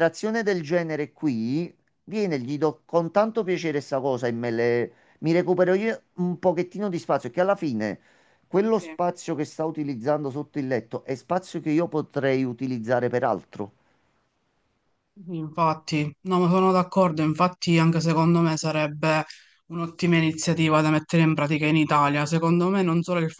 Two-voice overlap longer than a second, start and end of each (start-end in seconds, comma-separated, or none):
none